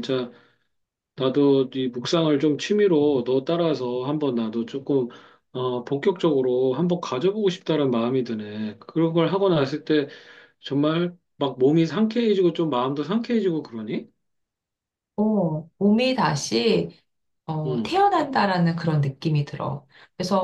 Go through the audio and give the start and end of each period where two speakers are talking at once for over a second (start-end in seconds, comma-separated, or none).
none